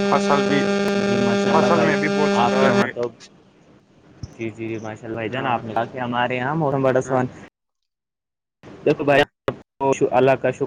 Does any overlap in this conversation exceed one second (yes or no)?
yes